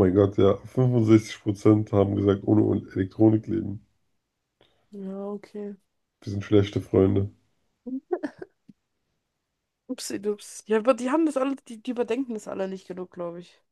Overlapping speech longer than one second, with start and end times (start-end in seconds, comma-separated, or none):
none